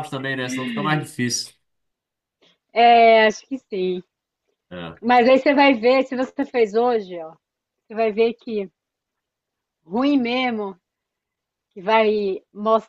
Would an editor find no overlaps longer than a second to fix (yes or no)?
yes